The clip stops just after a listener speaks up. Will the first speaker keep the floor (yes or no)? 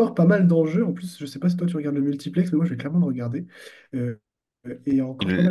yes